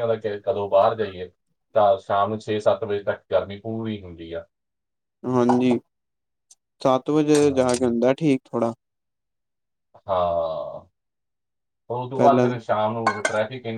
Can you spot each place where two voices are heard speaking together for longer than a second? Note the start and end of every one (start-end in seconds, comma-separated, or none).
none